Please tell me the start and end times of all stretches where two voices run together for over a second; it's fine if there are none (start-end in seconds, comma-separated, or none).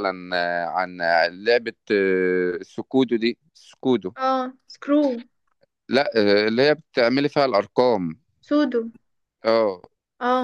none